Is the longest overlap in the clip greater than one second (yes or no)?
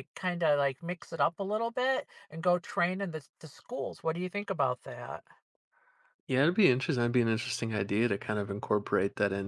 no